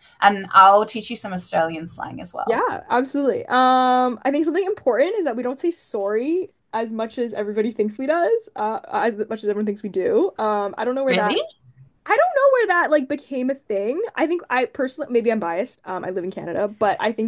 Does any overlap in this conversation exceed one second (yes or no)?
no